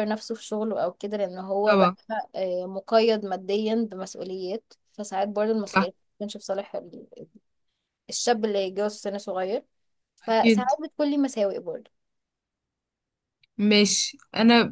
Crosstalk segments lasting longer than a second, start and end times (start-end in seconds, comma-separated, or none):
none